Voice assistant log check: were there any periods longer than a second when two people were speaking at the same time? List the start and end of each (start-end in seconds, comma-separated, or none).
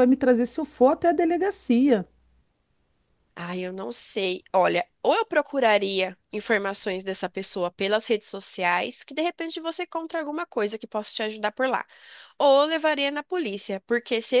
none